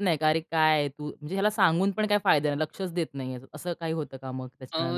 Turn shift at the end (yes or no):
yes